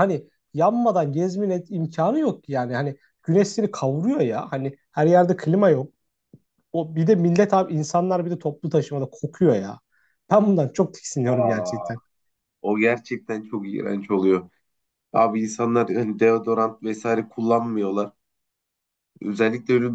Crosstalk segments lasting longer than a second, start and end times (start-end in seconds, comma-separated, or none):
none